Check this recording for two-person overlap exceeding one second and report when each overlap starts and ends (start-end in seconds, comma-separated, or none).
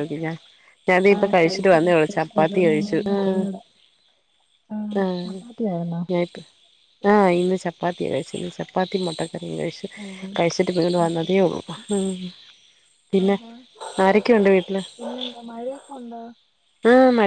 1.1-3.4